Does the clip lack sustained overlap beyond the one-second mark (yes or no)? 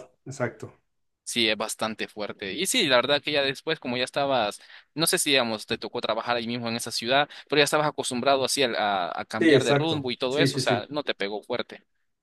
no